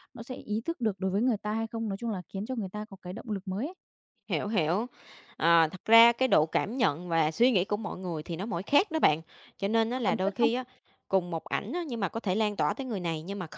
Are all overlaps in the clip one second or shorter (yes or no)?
yes